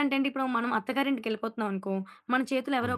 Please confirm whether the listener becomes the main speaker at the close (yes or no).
no